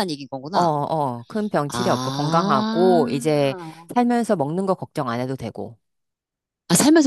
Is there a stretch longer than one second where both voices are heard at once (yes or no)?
yes